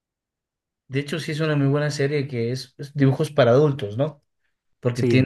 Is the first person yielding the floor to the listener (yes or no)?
no